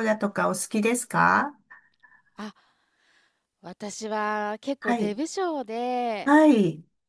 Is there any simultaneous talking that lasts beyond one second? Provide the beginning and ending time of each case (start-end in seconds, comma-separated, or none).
none